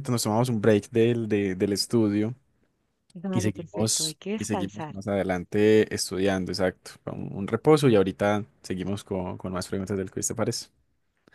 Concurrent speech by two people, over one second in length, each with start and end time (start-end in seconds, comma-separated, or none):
3.3-5.0